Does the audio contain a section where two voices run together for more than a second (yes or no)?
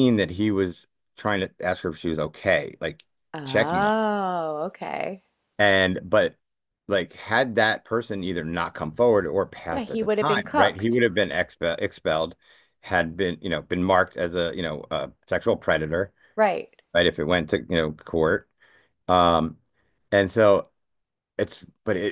yes